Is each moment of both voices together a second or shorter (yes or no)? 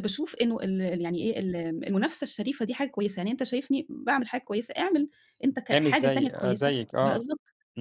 no